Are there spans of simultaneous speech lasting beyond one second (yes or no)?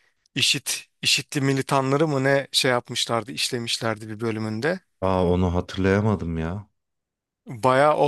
no